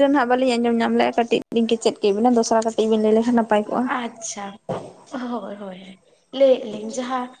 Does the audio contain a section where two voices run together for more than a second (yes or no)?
no